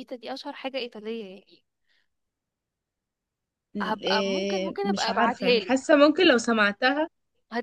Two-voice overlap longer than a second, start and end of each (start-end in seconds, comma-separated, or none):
3.8-5.9